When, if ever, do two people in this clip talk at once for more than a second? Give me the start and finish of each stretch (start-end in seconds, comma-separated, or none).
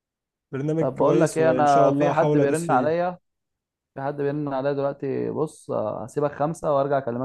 0.8-3.0